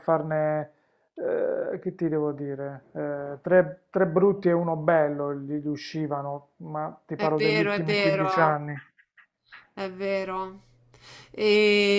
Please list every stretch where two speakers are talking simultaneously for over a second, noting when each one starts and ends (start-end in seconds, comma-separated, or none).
7.1-8.6